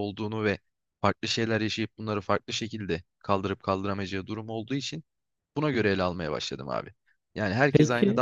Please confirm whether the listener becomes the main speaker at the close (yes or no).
no